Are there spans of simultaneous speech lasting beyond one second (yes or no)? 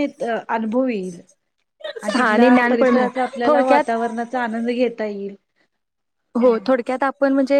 yes